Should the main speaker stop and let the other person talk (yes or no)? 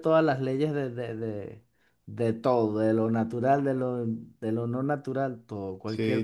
yes